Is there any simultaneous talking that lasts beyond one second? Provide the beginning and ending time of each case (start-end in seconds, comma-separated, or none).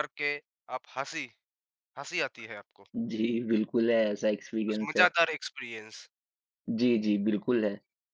none